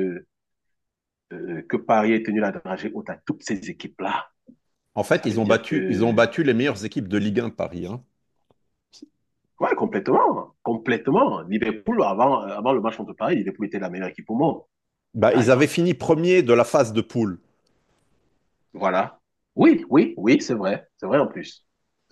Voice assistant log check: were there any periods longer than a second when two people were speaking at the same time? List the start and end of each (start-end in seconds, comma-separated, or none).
5.1-6.3